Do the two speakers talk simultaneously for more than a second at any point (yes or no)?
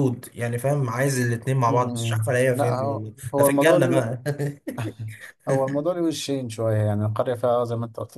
yes